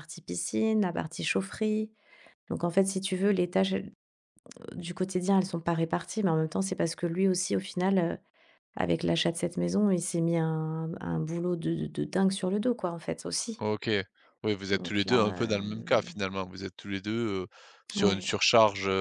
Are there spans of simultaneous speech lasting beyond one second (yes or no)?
yes